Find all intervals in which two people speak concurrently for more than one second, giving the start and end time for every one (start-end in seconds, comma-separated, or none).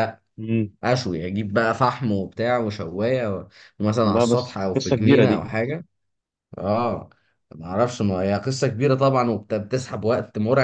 4.0-5.5